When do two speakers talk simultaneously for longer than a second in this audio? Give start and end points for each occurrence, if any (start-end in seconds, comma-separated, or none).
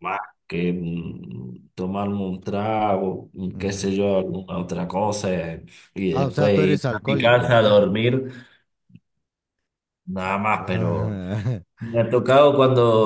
6.1-7.7